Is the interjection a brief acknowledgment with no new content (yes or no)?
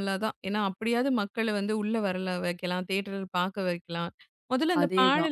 yes